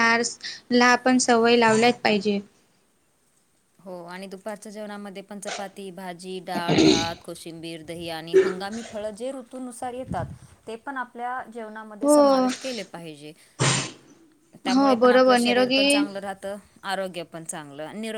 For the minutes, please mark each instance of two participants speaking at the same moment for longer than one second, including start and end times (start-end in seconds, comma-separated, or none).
14.7-16.1